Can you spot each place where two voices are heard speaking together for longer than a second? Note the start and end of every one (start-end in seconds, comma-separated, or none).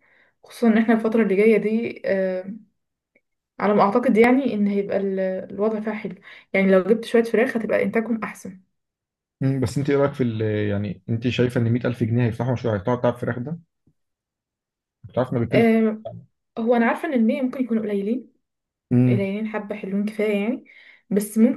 none